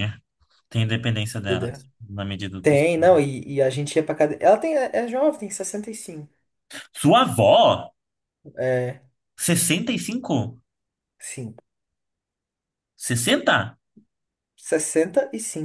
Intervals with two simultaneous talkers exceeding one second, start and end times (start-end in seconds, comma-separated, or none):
none